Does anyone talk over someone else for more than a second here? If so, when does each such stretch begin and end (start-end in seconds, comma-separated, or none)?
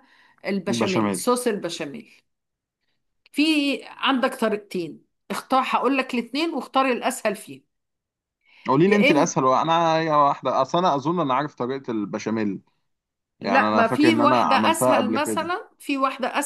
13.4-15.5